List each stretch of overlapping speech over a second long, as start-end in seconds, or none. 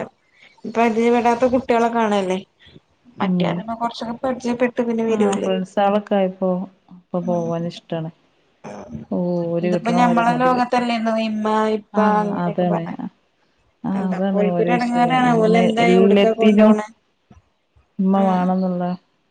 14.0-16.7